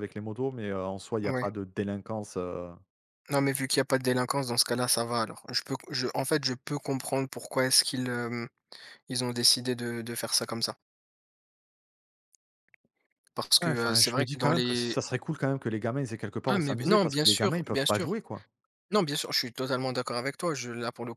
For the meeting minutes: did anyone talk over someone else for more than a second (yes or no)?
yes